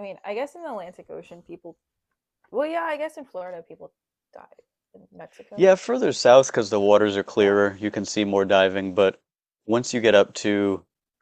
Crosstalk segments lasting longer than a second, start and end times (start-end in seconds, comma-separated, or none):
none